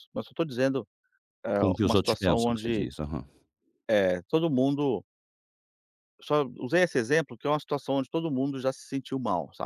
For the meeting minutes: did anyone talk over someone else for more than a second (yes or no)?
yes